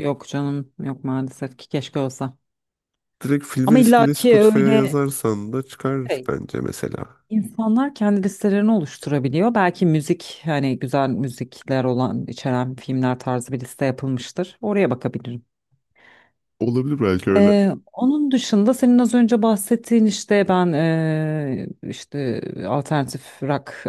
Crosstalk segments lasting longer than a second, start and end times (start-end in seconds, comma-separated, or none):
3.6-4.9